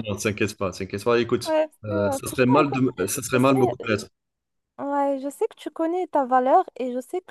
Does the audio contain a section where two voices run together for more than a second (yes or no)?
yes